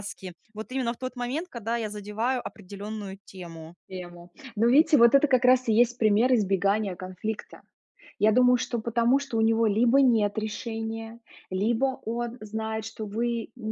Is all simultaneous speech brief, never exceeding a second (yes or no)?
yes